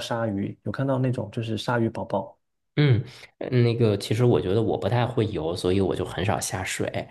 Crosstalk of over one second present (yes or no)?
no